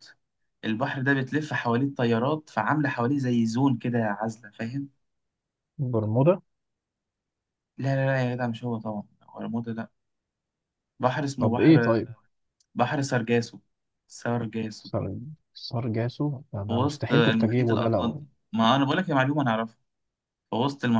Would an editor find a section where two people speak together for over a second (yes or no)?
yes